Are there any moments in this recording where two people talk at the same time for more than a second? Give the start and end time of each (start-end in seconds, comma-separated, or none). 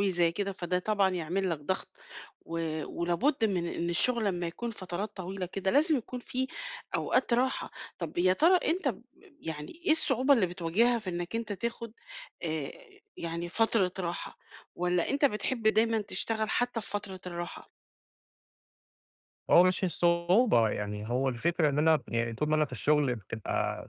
none